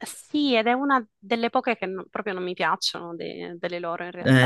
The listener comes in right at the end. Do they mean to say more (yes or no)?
yes